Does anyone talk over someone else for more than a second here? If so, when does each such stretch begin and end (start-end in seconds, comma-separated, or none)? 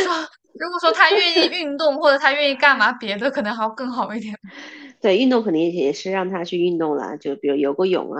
none